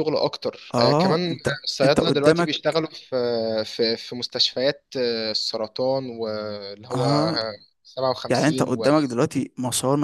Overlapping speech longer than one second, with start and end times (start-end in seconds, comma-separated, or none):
0.7-2.5